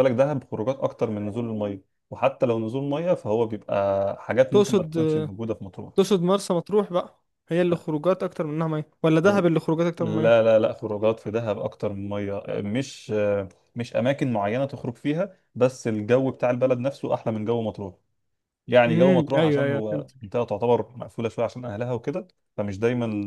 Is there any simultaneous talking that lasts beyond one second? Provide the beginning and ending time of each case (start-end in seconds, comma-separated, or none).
18.9-20.1